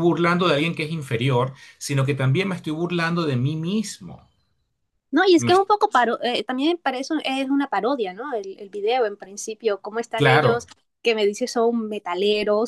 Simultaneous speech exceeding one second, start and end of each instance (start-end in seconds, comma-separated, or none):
none